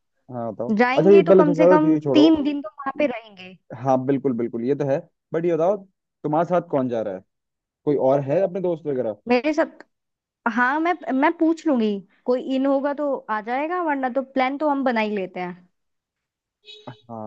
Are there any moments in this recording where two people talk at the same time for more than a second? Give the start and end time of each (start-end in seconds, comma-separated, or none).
0.8-2.4